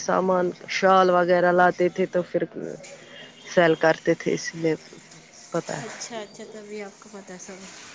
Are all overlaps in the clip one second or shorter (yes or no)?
yes